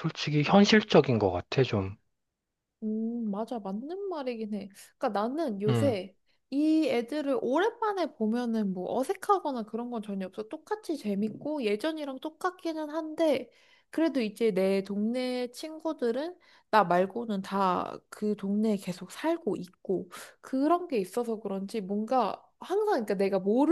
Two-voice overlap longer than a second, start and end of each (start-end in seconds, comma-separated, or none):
none